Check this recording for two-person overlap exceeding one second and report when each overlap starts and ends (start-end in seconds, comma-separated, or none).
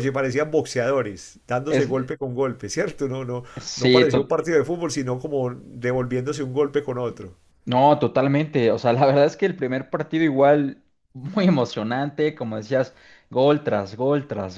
none